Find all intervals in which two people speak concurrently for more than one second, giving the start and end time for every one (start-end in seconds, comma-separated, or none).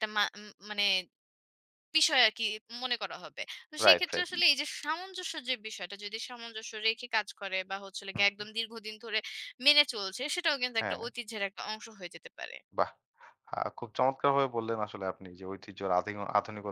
none